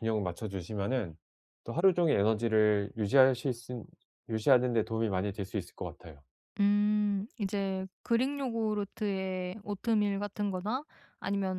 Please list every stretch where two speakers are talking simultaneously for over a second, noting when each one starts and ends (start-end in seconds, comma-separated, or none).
none